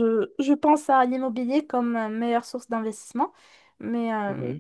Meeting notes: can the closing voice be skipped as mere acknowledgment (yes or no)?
yes